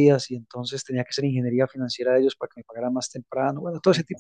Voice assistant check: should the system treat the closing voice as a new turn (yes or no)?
yes